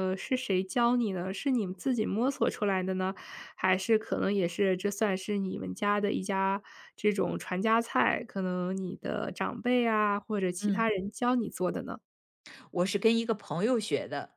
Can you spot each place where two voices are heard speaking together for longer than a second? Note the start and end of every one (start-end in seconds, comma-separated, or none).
none